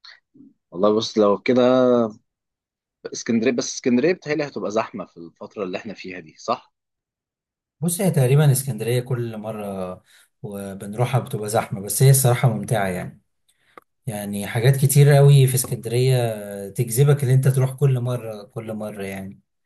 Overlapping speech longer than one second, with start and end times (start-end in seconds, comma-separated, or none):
none